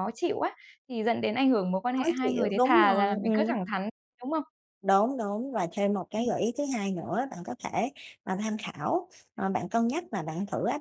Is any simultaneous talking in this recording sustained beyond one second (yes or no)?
yes